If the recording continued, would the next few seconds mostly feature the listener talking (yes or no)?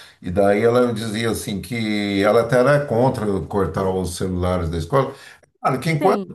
no